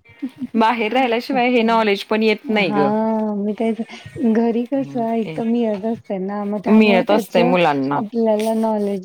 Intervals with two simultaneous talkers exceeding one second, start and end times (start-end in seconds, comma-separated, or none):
6.7-8.0